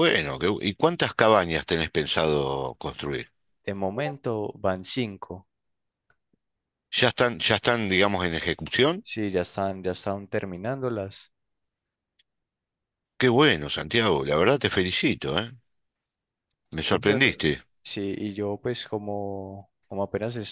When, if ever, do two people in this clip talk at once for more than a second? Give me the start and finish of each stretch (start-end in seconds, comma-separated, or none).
none